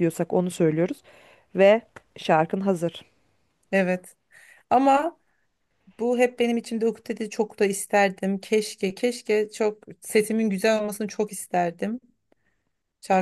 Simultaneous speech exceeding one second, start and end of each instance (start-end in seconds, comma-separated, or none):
none